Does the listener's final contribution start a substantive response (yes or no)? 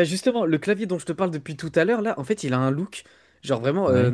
no